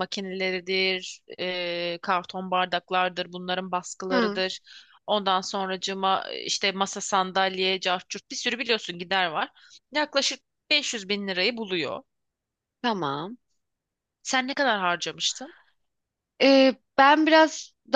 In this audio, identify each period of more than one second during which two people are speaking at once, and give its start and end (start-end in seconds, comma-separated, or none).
none